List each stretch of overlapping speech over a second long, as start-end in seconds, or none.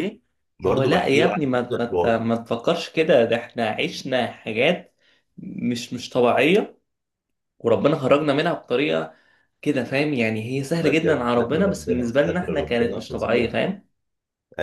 0.7-2.3, 10.8-13.6